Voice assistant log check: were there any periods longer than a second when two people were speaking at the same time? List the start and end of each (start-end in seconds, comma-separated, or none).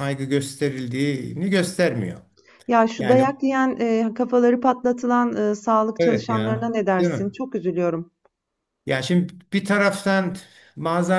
6.0-7.3